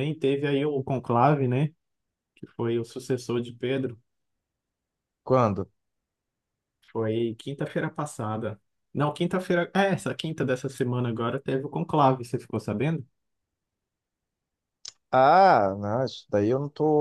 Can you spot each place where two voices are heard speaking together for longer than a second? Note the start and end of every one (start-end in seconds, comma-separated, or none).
none